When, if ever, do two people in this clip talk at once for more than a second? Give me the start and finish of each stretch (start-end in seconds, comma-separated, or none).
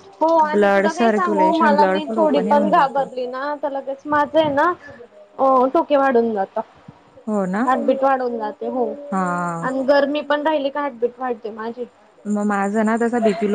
0.5-3.1